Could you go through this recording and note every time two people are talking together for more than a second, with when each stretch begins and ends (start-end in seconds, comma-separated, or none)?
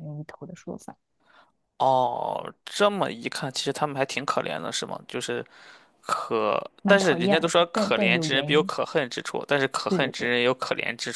6.8-8.7